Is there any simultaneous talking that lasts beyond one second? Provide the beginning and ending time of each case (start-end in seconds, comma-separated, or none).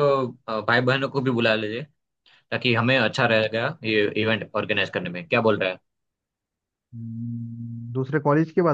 none